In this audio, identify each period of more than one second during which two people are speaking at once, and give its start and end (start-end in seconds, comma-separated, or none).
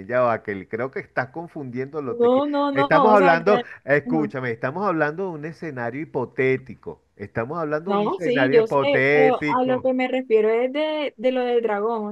2.0-3.7, 7.8-9.9